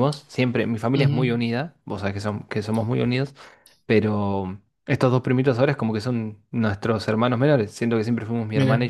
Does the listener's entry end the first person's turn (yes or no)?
no